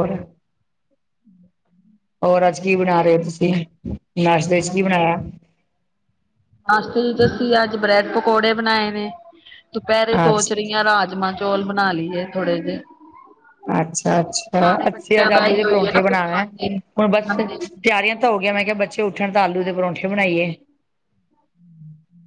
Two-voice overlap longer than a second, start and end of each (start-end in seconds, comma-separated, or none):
15.0-16.4